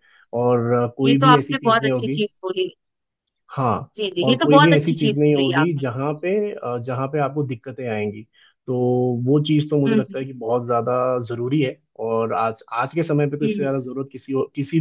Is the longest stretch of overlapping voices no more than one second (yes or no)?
no